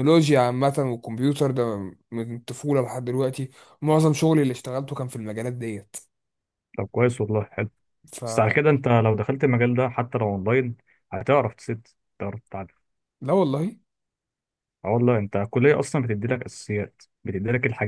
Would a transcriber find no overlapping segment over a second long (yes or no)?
yes